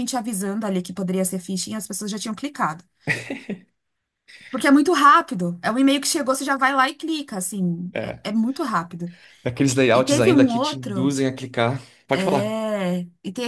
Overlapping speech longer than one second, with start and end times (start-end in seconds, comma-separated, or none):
9.9-11.1